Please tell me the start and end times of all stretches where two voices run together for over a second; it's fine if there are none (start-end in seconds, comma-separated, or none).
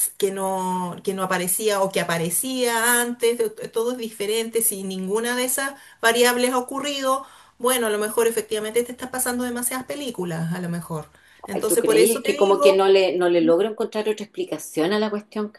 11.5-12.8